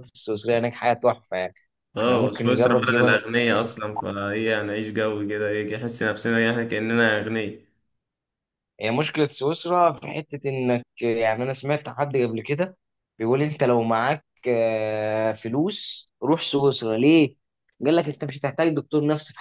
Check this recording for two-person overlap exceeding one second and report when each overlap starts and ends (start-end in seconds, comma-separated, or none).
2.0-3.2